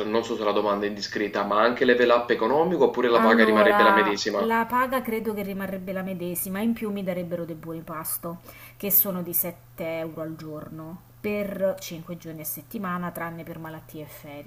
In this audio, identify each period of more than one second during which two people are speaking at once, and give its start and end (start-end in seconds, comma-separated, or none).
3.1-4.5